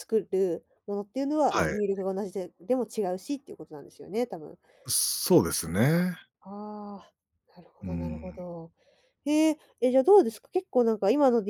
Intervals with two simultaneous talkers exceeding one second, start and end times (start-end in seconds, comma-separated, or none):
none